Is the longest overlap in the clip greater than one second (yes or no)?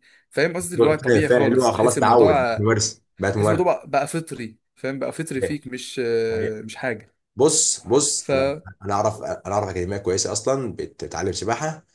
yes